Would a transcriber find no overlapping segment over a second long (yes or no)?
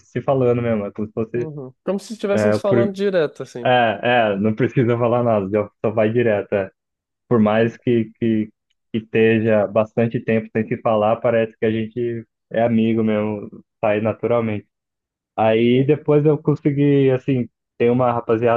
yes